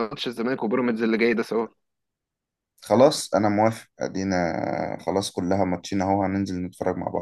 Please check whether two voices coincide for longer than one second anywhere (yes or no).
no